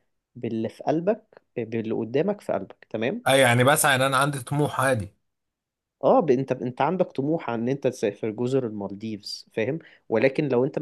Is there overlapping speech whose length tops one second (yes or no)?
no